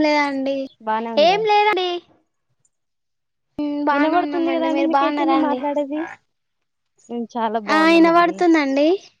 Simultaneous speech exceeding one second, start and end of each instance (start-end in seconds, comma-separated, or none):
3.9-5.6